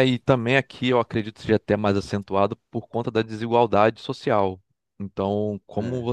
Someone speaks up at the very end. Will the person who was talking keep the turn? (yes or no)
yes